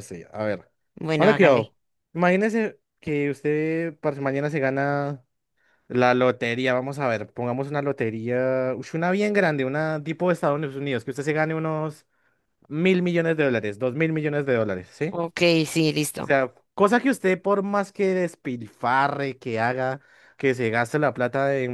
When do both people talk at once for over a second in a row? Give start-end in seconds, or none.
none